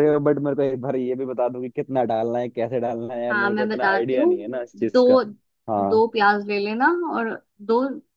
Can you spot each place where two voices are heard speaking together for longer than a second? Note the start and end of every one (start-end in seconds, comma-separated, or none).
3.3-5.2